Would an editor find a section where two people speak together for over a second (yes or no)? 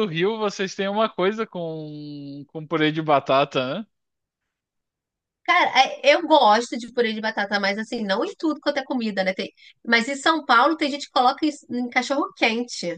no